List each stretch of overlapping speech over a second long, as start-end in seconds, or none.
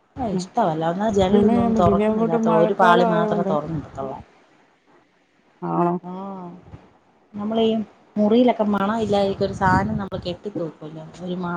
1.3-3.5